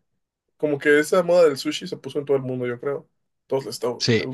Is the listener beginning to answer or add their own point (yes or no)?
yes